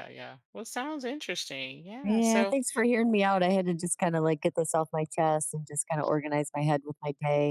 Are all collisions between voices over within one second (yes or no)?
yes